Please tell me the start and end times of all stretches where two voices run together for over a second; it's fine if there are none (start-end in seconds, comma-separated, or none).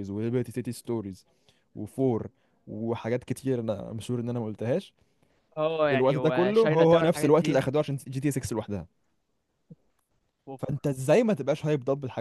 5.9-7.6